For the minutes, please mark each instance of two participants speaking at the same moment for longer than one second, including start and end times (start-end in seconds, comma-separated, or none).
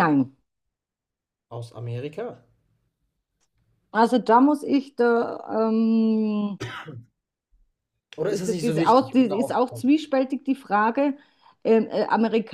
8.2-9.9